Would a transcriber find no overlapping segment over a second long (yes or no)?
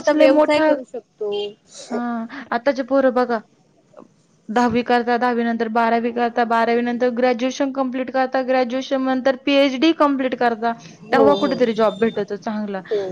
yes